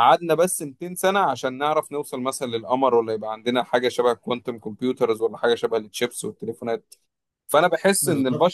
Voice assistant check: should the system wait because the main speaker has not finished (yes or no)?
yes